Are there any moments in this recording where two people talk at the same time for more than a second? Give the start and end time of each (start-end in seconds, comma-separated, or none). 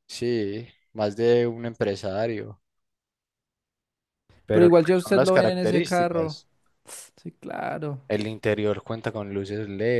4.5-6.4